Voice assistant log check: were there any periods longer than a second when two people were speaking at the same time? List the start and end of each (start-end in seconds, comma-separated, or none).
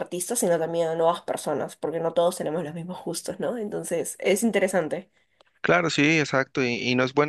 none